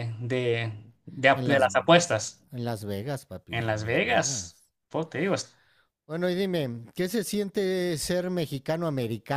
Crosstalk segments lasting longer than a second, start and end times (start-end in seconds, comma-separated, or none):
3.5-4.7